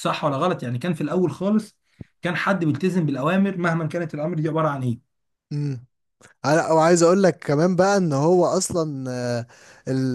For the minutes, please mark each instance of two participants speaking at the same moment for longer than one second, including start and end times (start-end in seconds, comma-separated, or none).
none